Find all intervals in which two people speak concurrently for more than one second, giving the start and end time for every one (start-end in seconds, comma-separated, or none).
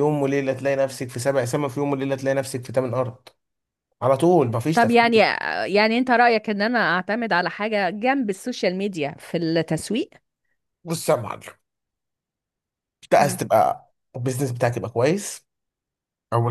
none